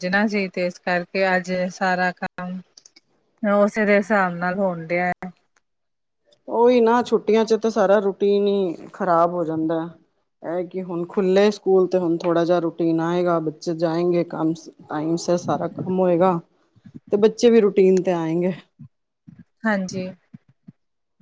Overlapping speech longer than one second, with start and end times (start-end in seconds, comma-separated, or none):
none